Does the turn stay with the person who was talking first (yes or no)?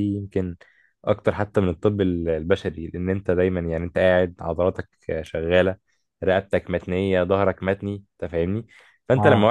yes